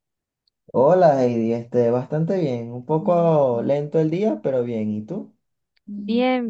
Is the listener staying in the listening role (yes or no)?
no